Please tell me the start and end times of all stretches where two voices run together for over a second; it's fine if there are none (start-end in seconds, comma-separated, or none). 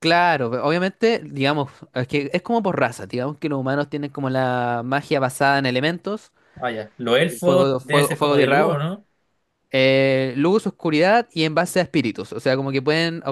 7.2-8.8